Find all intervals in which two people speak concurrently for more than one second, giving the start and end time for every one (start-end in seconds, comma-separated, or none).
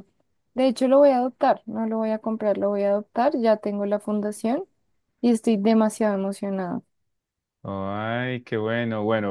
none